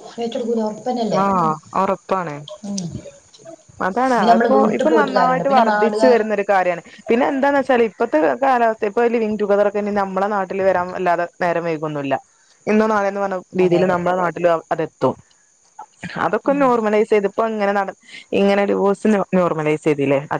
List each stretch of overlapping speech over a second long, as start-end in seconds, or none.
4.2-6.2